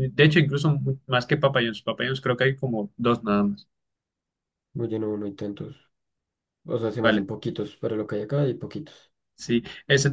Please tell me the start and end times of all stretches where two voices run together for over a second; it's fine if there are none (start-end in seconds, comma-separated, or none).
none